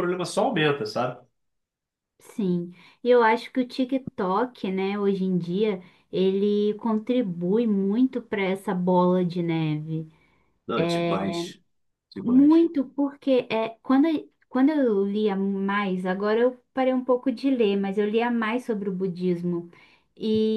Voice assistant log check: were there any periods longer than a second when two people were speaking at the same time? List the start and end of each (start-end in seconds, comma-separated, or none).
none